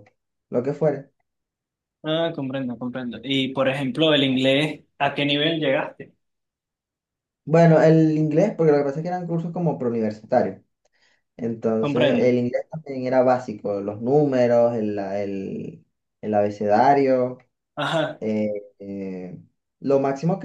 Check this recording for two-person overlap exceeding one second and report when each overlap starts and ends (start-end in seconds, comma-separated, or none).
none